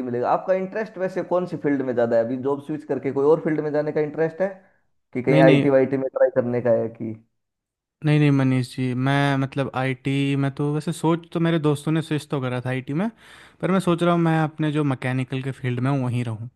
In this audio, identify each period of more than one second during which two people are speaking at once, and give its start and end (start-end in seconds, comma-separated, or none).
none